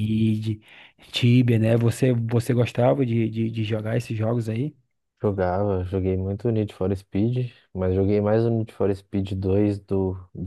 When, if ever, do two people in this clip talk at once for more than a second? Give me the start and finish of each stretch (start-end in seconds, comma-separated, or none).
none